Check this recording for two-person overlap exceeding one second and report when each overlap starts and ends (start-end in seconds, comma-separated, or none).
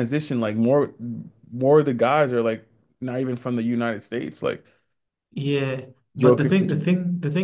none